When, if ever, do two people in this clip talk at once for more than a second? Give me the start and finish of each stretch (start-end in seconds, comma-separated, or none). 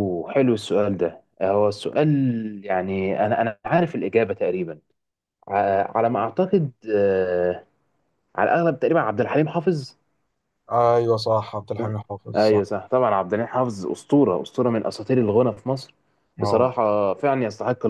none